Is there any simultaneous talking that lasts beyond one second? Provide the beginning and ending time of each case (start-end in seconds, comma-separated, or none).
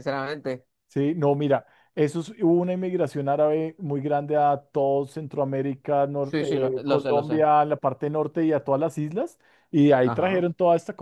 6.2-7.4